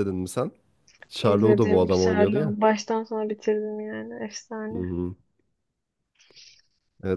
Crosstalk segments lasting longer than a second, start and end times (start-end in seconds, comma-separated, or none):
1.2-2.5